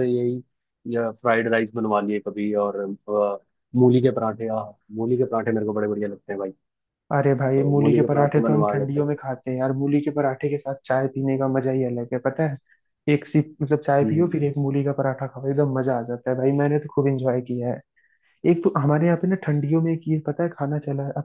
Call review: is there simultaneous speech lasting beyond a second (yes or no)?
yes